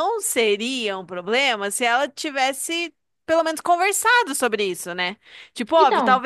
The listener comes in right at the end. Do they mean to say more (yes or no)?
no